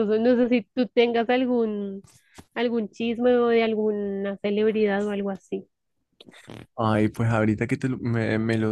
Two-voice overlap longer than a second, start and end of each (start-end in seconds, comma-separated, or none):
none